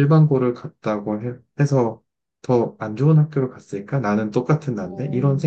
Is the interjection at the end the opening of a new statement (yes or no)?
yes